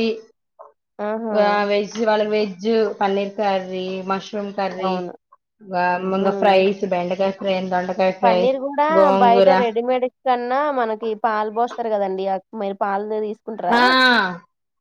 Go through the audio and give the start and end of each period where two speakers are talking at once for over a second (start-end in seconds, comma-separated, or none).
none